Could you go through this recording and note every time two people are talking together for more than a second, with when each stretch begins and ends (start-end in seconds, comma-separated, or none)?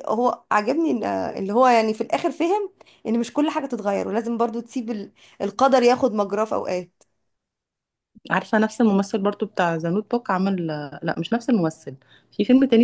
none